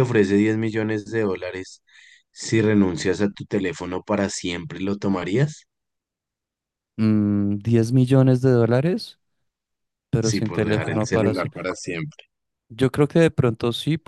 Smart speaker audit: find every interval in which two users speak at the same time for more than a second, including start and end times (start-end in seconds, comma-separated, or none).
10.2-11.5